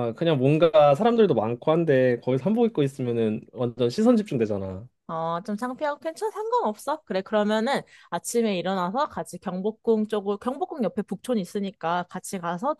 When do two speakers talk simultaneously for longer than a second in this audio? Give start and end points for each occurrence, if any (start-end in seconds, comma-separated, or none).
none